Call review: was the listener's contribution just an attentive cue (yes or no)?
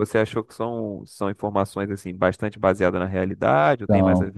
no